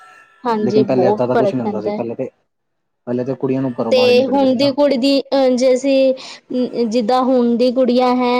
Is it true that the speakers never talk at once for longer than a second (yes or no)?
no